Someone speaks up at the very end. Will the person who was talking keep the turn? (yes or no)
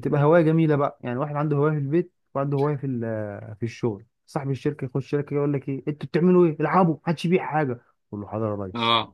yes